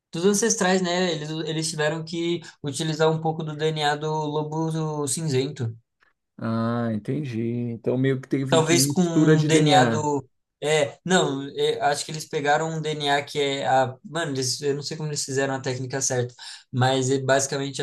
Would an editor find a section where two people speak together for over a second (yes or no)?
yes